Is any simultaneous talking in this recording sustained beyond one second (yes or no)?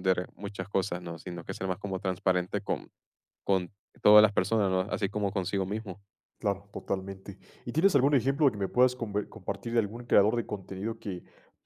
no